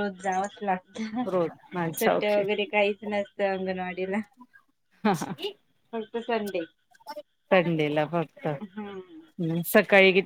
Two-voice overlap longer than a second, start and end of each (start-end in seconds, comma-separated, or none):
none